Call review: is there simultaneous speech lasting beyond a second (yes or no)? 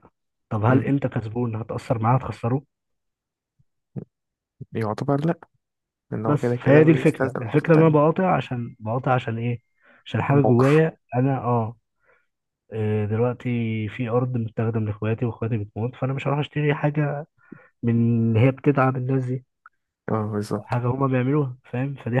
yes